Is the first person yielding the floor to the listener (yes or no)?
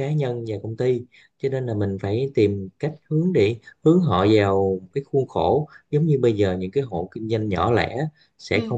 no